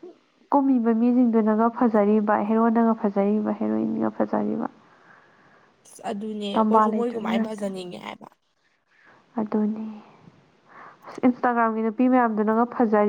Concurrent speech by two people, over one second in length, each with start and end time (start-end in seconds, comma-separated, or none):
none